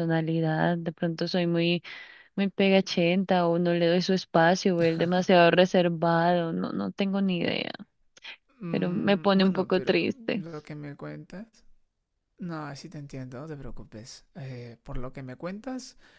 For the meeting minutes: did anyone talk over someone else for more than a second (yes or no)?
yes